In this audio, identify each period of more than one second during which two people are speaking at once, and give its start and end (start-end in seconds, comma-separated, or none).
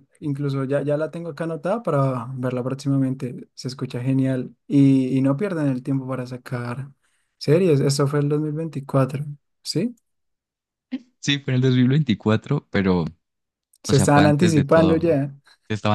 13.9-15.2